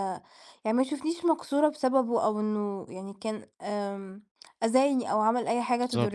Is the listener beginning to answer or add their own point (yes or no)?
yes